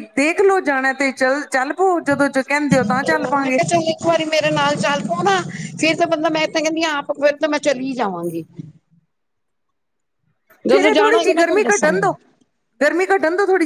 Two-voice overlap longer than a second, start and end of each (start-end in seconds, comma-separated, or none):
10.7-12.1